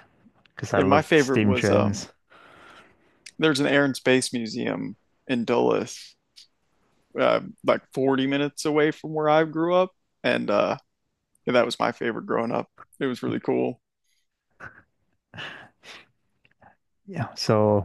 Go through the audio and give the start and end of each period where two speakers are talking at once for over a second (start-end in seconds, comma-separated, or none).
0.8-2.0